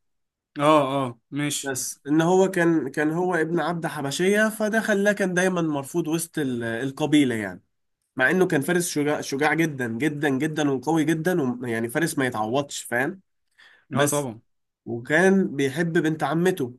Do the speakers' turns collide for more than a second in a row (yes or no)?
no